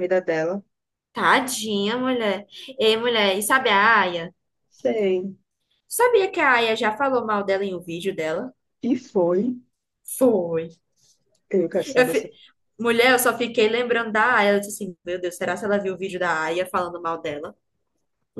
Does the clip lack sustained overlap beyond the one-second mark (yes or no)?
yes